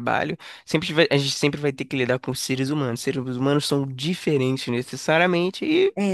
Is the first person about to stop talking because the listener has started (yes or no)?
no